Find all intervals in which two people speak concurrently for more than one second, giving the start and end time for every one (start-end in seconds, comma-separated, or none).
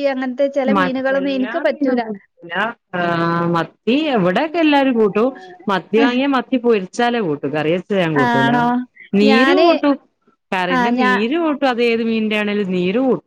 0.8-2.0